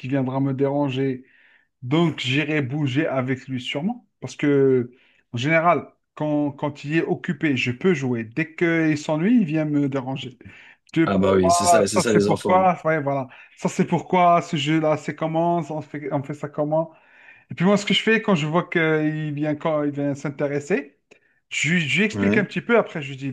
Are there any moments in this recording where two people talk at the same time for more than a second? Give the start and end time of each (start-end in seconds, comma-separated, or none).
11.1-12.7